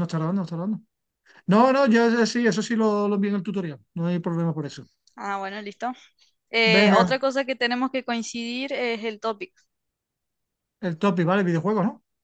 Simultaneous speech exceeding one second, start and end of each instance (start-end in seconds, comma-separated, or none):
none